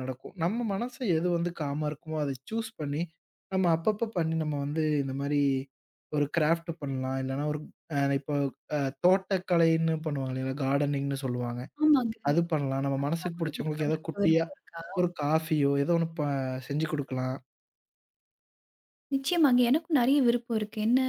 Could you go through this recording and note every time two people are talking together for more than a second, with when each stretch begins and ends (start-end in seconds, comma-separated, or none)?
13.0-14.4